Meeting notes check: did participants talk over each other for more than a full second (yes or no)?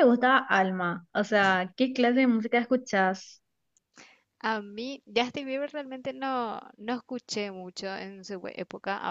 no